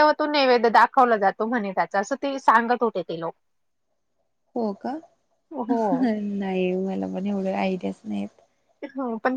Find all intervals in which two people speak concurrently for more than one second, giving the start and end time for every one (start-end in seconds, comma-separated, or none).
none